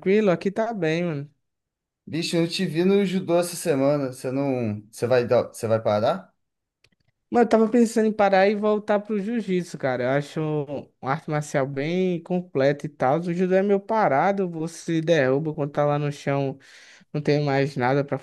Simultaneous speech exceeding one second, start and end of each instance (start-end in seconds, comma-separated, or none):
none